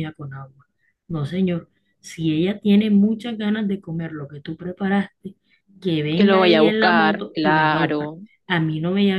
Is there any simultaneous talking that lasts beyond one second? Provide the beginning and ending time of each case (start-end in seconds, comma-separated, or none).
6.2-8.1